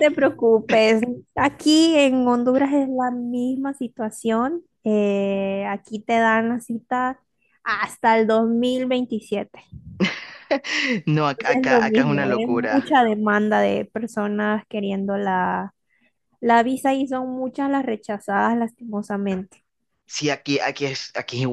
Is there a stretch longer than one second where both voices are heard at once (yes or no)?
yes